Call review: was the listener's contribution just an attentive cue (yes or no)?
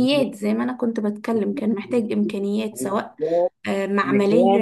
yes